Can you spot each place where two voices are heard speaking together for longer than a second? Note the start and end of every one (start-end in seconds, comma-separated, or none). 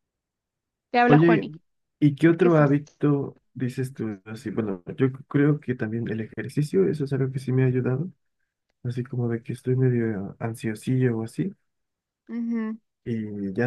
none